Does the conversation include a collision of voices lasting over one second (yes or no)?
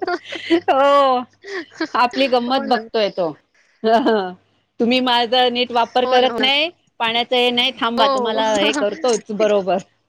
yes